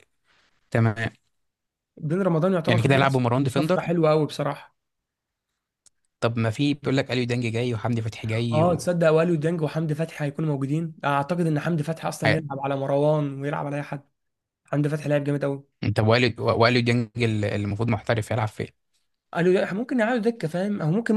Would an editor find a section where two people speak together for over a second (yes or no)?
yes